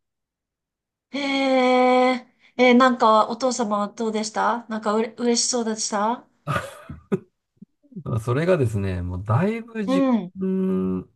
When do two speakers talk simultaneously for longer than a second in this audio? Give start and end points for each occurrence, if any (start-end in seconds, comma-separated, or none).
none